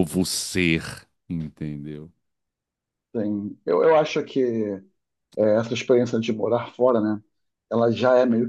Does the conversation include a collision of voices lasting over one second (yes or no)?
no